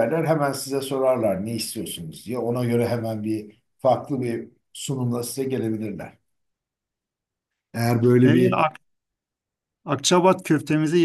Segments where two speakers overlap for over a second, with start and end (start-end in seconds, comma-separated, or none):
none